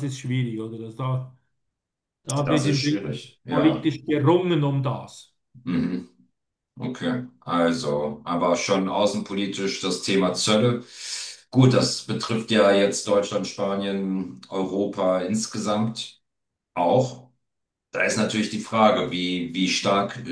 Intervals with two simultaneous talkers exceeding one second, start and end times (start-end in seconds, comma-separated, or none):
2.4-3.9